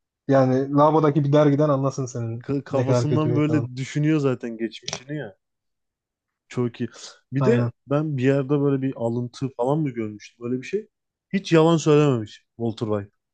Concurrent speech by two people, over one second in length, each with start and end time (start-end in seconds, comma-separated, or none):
2.4-3.7